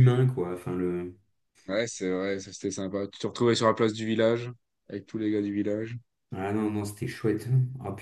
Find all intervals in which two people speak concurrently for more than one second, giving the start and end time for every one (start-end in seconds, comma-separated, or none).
none